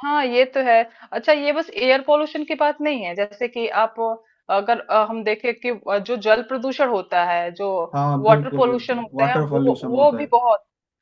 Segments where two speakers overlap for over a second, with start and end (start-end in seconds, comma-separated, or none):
8.2-10.3